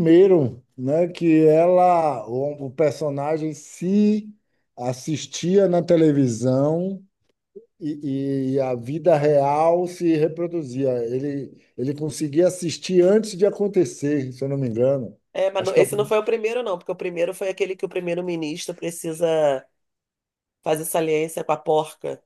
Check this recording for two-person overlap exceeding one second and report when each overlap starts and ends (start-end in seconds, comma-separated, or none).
none